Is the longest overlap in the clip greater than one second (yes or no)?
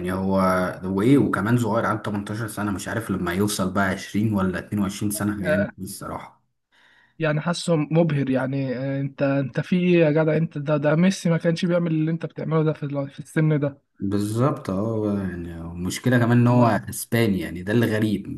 no